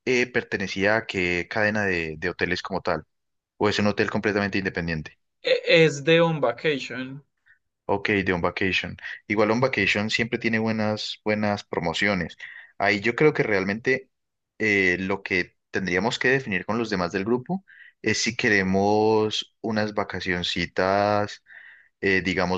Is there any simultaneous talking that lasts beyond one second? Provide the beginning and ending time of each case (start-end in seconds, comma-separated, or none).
none